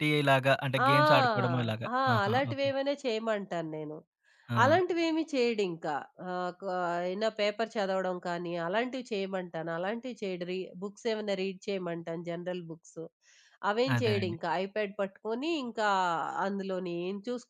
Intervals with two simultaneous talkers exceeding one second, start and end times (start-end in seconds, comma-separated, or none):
0.9-2.7